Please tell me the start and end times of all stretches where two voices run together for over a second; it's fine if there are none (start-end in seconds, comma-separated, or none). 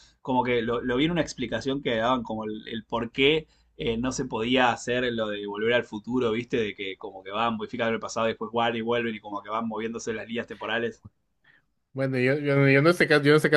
none